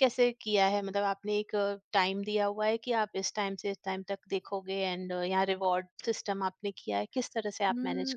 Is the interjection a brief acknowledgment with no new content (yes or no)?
no